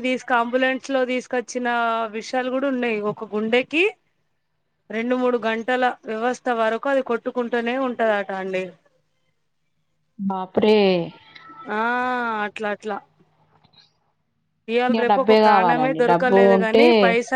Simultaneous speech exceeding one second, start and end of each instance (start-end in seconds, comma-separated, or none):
14.9-16.8